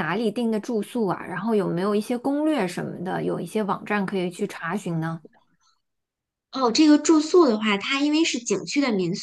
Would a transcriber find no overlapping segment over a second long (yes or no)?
yes